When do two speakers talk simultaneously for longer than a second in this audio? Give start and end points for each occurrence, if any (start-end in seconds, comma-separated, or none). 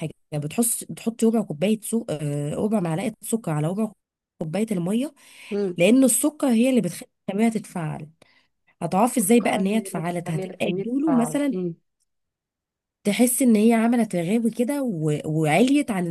9.2-11.6